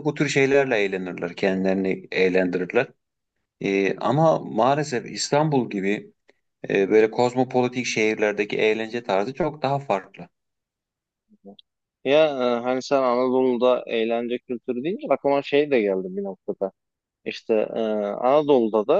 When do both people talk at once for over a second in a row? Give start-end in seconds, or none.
none